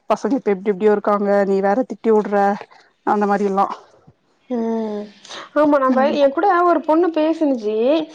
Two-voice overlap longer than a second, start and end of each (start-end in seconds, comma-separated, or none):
none